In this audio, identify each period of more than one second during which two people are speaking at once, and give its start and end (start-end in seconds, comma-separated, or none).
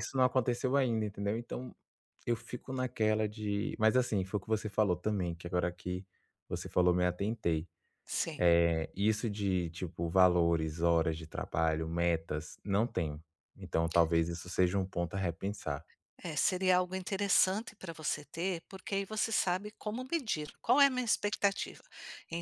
none